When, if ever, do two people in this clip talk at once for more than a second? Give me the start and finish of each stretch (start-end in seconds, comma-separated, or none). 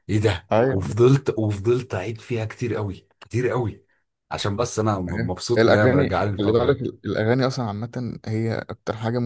5.1-6.8